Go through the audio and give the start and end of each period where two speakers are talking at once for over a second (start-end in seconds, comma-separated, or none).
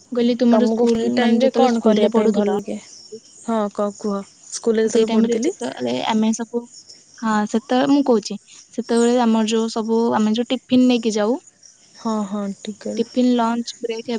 0.5-2.6